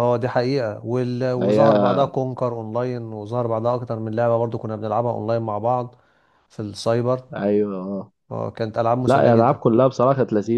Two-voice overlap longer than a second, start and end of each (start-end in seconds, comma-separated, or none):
none